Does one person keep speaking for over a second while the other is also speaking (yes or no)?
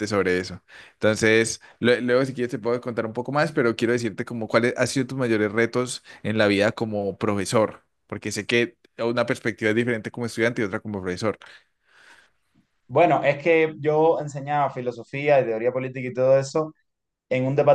no